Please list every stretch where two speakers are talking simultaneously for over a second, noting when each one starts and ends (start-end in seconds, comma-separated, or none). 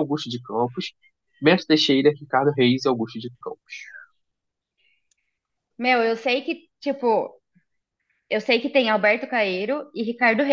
none